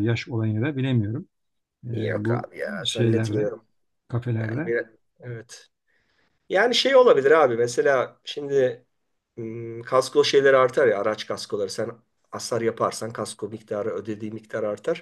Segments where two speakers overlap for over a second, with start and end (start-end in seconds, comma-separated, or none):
1.9-3.5